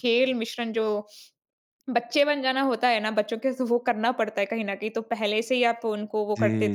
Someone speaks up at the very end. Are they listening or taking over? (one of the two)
listening